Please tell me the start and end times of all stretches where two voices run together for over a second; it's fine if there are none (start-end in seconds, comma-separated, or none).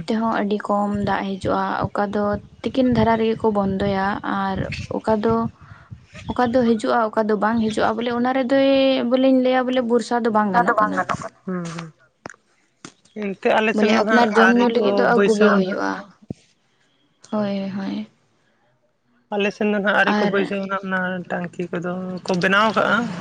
13.7-15.9